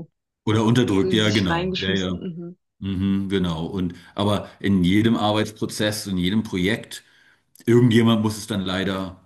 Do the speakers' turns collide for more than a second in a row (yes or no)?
yes